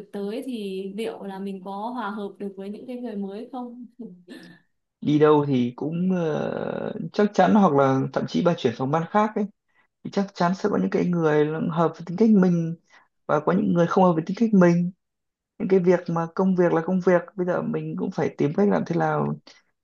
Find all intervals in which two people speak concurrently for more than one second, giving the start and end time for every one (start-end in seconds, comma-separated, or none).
none